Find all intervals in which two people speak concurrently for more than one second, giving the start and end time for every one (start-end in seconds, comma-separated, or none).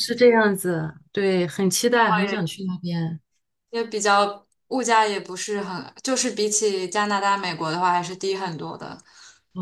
none